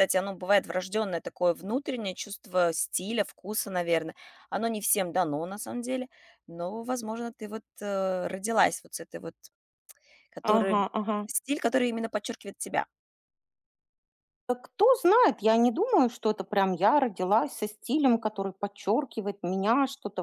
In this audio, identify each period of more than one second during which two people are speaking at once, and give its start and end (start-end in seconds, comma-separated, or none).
none